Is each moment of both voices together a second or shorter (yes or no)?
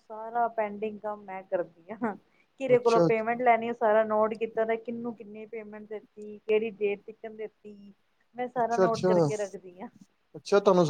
yes